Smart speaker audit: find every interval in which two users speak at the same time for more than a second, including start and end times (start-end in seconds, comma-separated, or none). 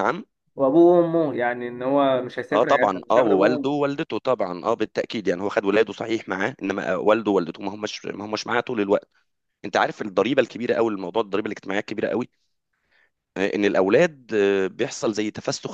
2.5-3.8